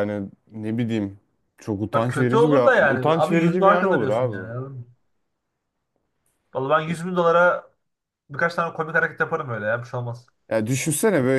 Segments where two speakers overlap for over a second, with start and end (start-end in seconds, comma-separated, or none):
1.9-4.4